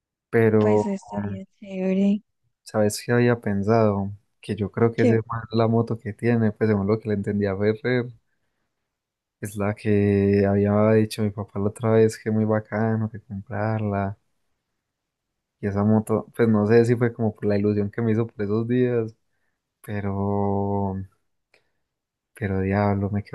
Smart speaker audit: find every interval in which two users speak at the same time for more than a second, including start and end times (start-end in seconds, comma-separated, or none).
none